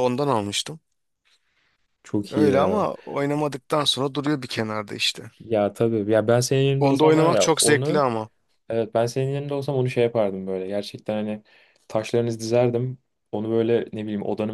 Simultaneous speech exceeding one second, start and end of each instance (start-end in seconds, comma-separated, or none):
6.8-8.0